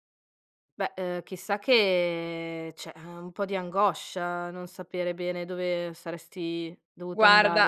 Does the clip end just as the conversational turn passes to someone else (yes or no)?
yes